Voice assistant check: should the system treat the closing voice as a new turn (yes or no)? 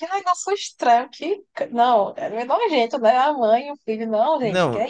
yes